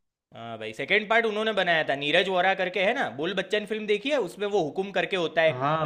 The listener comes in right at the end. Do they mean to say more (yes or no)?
yes